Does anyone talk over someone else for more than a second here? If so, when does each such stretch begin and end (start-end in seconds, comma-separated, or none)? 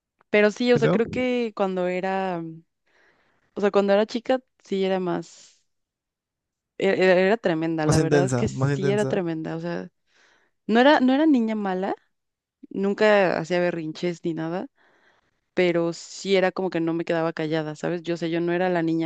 7.8-9.2